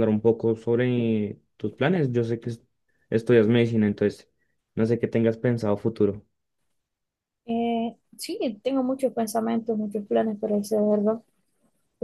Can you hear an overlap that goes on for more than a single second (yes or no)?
no